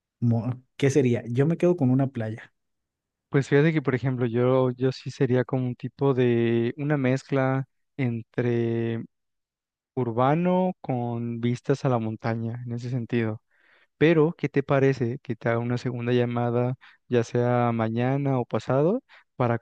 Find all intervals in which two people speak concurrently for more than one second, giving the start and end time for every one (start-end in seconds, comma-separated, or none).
none